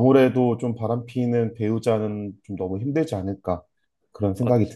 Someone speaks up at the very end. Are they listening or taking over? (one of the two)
taking over